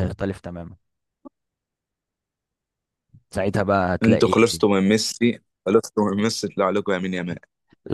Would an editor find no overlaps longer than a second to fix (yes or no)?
yes